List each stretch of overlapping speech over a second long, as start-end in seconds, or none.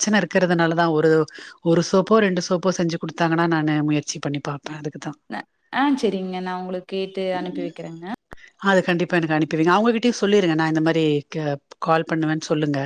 none